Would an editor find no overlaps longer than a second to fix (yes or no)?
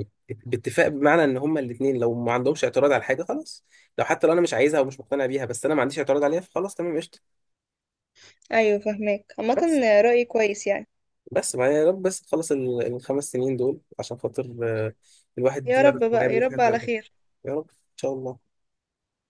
no